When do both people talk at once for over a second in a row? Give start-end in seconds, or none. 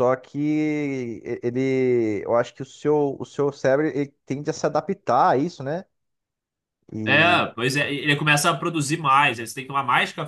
none